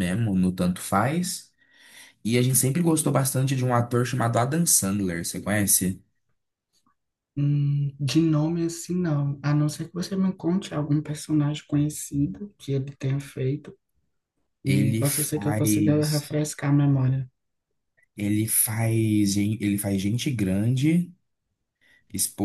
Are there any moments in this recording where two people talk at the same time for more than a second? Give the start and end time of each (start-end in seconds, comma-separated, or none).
14.7-16.4